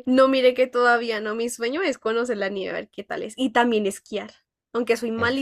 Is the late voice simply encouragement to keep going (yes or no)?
yes